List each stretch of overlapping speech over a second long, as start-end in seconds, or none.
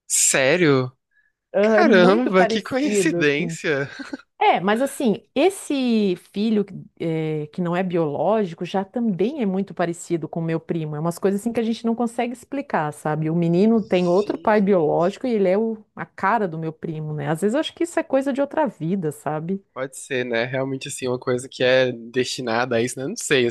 1.6-3.6, 13.7-15.1